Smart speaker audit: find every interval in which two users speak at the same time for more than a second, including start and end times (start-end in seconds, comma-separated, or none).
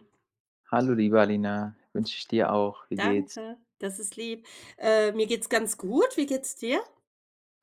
none